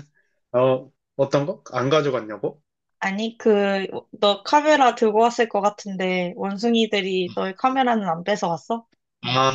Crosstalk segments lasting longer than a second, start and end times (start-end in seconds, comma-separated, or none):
none